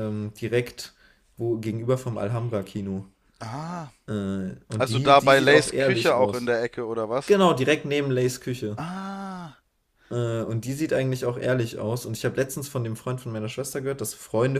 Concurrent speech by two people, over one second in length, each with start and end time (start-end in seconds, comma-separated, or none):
4.8-6.5